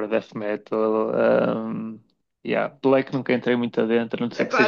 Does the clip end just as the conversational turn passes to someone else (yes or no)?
yes